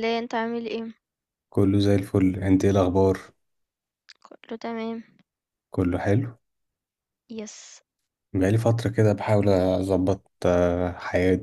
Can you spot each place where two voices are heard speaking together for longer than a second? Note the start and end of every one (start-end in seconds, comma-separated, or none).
none